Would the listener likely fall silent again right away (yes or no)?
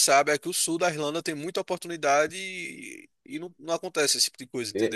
no